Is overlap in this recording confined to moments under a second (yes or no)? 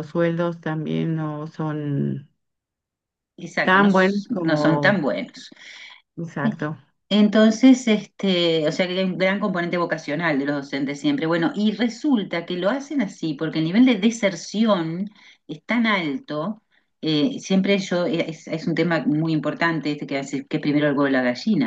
no